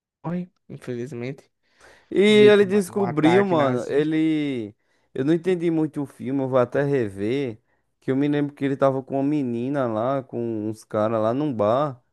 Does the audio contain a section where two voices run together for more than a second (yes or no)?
yes